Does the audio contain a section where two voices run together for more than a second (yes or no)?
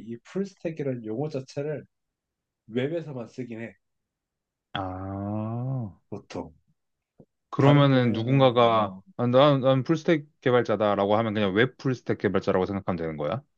yes